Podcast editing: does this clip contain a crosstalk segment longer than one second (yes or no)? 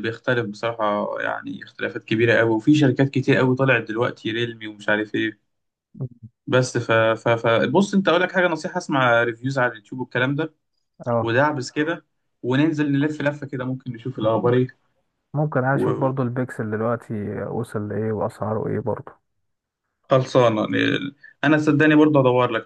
no